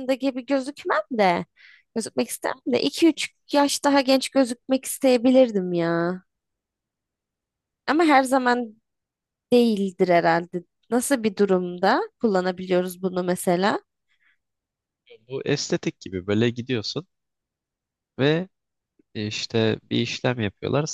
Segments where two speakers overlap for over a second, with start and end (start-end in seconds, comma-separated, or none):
none